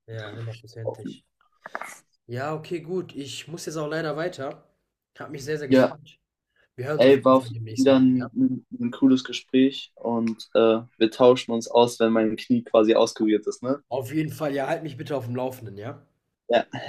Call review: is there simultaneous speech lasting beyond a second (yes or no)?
yes